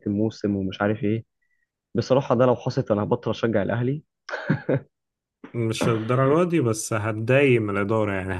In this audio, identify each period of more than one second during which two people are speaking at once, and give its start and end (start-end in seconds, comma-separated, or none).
none